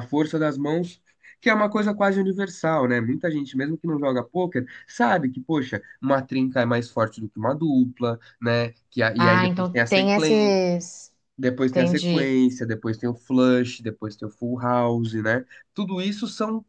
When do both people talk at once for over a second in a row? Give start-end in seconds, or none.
9.2-10.6